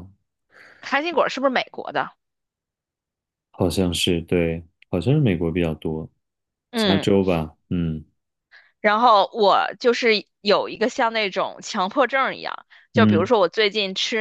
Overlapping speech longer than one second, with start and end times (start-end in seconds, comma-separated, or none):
none